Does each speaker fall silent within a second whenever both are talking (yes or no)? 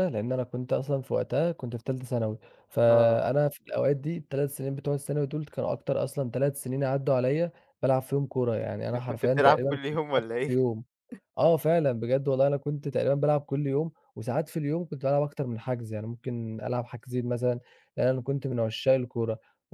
no